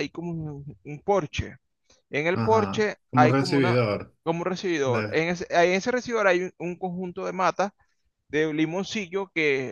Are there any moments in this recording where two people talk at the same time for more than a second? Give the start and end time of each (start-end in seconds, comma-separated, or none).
2.3-3.8